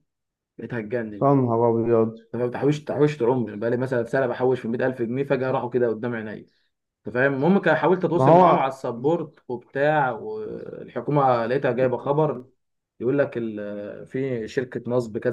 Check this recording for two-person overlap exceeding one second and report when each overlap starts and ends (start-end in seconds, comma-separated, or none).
none